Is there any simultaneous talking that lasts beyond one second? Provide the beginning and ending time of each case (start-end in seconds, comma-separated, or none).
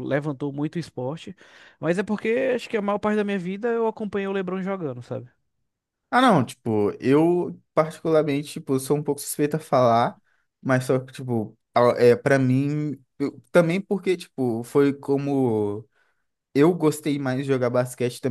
none